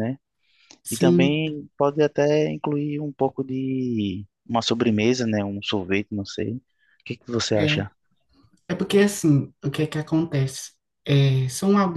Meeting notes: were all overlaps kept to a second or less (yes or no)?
yes